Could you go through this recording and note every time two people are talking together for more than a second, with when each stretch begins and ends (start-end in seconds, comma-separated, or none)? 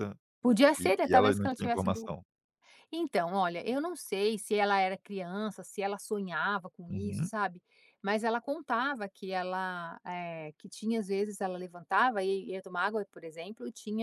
0.8-2.1